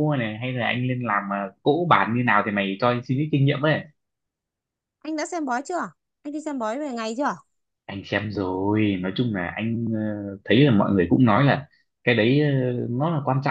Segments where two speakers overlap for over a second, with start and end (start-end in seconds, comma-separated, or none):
none